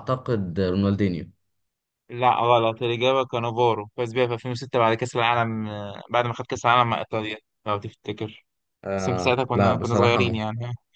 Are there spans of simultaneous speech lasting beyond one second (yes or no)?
yes